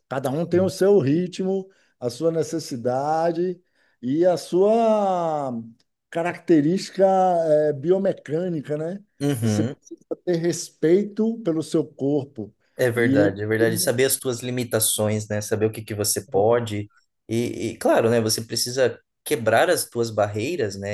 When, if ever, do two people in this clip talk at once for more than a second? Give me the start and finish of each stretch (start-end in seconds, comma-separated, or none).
none